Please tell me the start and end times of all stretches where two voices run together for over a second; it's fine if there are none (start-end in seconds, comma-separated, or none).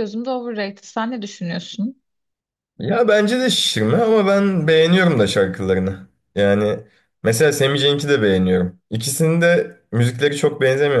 none